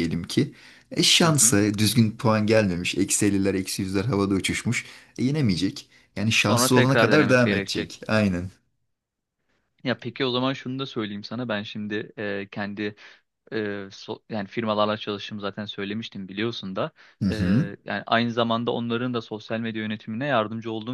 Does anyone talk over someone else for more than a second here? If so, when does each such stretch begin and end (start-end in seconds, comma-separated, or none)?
6.4-8.0